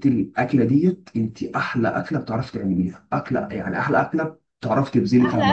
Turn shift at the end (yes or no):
yes